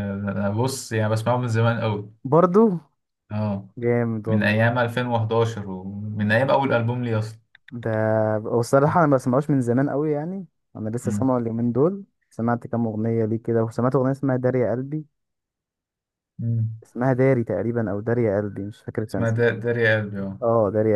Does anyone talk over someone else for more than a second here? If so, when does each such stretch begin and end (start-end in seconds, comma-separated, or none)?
none